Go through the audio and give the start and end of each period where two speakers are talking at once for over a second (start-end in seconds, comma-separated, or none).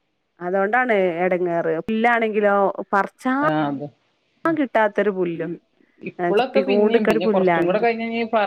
6.4-7.8